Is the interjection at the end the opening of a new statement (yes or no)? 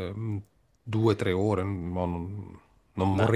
no